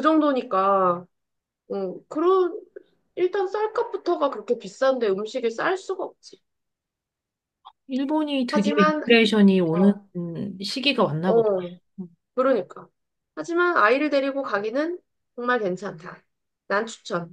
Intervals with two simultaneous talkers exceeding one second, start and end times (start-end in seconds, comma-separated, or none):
none